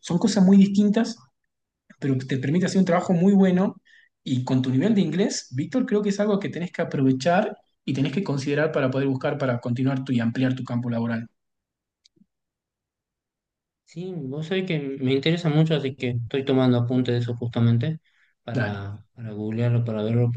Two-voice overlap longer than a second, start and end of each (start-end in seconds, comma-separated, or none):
none